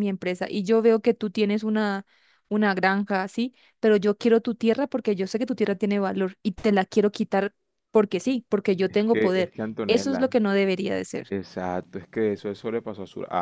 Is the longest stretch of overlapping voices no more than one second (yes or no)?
no